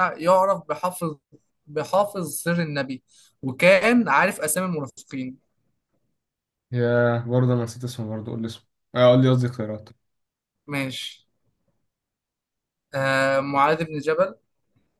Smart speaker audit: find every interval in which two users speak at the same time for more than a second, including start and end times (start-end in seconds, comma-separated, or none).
none